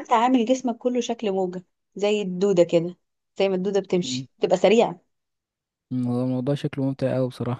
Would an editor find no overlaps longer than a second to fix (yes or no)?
yes